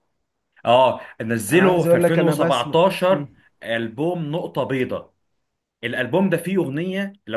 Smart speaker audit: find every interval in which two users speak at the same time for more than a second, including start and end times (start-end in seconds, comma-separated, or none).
1.5-3.4